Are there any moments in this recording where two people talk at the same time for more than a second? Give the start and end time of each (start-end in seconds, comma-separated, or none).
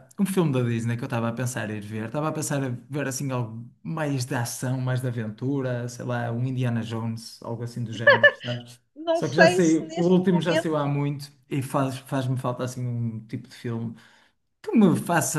8.9-10.9